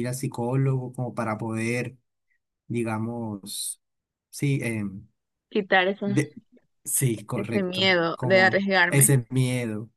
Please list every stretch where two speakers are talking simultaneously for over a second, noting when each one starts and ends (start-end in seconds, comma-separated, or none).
7.3-9.1